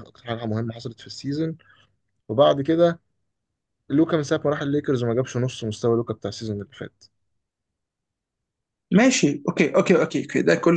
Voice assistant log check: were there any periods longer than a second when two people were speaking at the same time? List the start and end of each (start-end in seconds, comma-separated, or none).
none